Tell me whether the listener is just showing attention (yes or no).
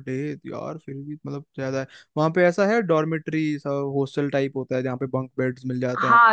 no